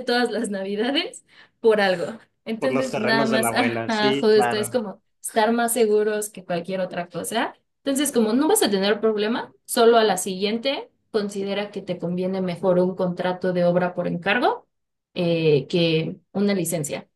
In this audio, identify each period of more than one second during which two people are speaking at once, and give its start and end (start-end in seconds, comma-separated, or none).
2.6-4.8